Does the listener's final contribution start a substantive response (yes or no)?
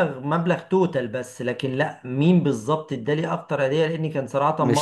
no